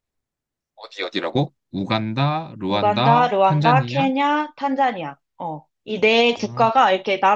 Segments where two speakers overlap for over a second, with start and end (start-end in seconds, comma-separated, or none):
2.7-4.0